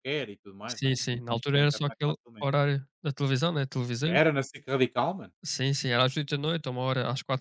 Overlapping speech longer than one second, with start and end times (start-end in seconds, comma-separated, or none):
0.7-2.5